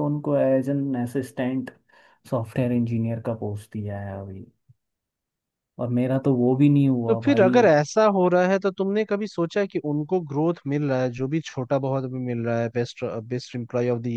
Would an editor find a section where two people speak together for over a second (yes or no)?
no